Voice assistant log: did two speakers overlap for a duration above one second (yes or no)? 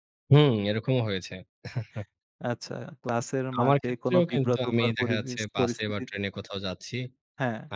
yes